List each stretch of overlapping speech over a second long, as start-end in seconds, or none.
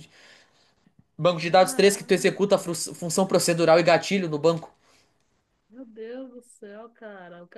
1.4-2.7